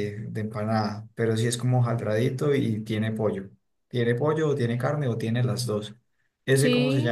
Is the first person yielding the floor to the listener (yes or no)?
yes